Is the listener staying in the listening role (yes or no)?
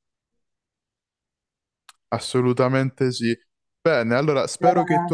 yes